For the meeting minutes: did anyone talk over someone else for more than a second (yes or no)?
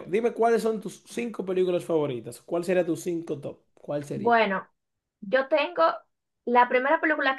no